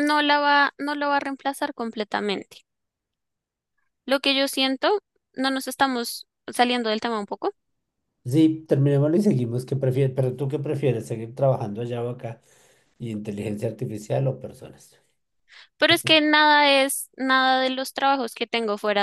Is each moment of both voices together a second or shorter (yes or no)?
yes